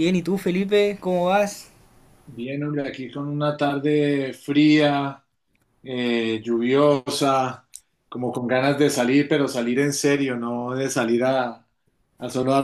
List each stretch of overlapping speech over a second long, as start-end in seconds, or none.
none